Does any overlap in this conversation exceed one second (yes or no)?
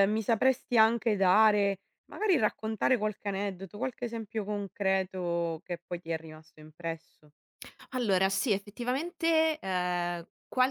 no